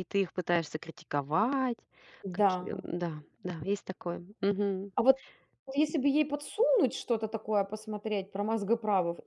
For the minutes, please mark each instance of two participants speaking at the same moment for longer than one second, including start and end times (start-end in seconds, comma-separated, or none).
none